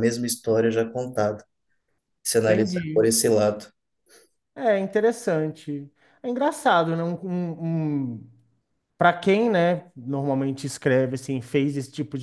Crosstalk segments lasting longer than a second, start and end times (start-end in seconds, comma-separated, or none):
none